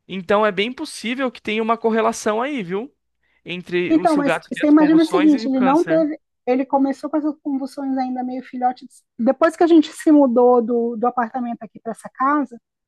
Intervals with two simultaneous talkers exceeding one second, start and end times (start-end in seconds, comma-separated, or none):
3.9-6.1